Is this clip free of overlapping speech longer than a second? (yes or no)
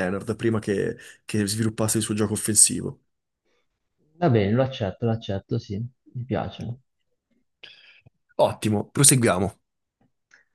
yes